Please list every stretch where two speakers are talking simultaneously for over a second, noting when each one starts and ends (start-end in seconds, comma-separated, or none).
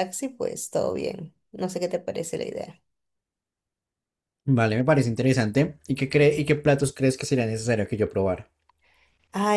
none